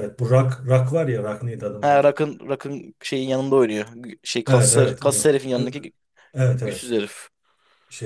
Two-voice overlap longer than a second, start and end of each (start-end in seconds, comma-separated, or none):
4.5-5.8